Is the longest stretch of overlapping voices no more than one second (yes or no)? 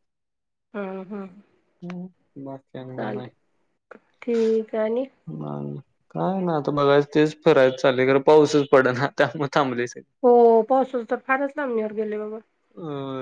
yes